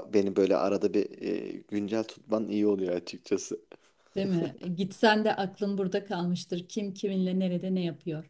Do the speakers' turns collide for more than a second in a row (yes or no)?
no